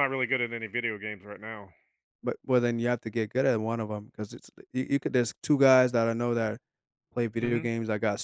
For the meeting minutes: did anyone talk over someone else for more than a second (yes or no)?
no